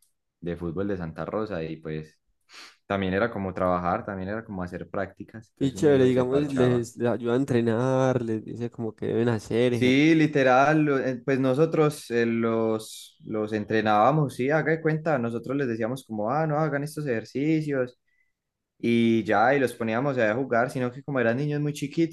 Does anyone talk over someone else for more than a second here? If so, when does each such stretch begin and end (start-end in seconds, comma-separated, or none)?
5.6-6.9